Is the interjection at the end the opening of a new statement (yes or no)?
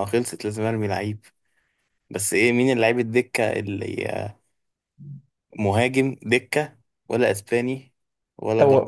yes